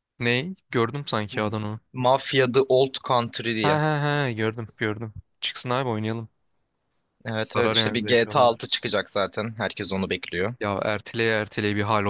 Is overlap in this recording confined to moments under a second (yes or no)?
no